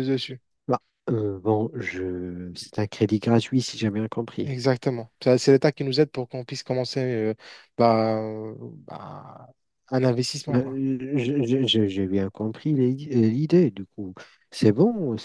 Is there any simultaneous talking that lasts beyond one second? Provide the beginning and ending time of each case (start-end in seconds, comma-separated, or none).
none